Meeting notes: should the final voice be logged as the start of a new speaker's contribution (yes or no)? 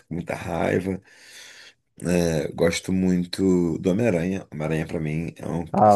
yes